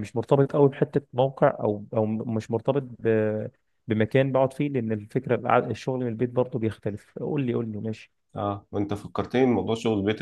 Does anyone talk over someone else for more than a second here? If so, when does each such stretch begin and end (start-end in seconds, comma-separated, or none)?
none